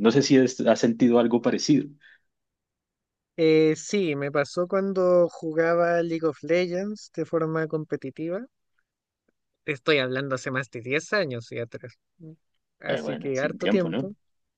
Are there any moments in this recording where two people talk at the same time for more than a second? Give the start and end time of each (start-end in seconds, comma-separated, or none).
12.9-14.1